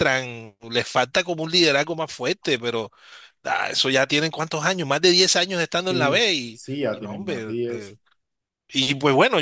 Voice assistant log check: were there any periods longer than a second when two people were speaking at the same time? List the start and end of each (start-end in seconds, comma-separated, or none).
5.8-8.0